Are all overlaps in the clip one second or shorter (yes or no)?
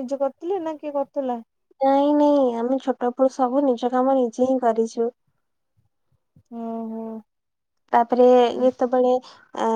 yes